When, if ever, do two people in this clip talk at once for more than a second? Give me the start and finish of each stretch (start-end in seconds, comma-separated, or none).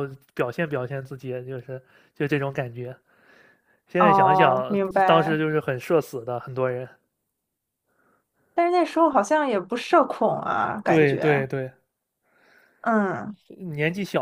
4.0-5.4